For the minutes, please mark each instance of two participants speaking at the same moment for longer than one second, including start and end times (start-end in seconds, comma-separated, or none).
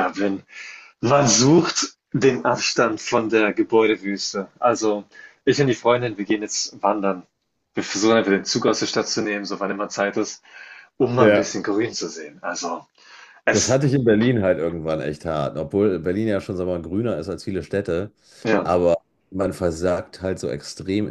none